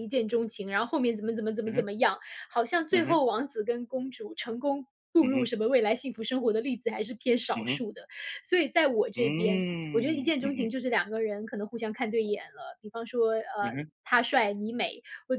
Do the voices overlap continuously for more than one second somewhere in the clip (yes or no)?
yes